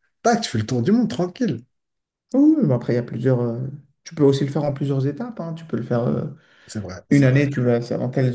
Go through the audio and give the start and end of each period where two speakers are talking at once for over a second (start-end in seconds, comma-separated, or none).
none